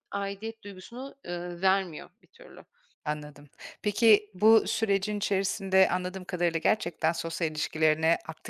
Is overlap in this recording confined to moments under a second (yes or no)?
yes